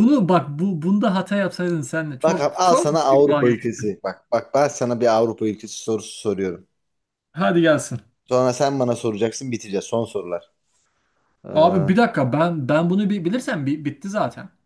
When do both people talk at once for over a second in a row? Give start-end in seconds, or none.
2.2-3.9